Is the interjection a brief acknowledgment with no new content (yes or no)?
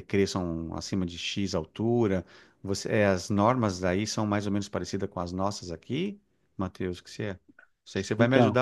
yes